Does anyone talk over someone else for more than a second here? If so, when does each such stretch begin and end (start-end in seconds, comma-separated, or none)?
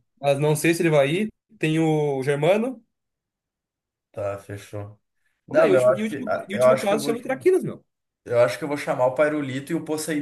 5.5-7.1